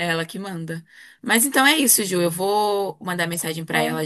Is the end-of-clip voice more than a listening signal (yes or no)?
no